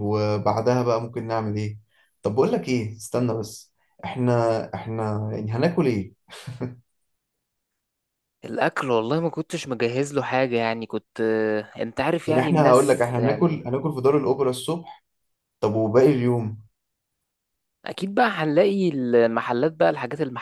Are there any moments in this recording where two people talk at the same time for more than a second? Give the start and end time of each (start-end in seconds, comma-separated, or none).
12.3-13.7